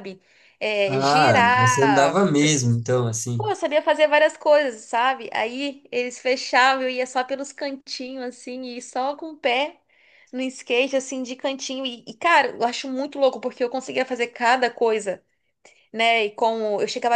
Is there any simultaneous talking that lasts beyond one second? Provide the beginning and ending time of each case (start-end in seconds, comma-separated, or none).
0.9-2.2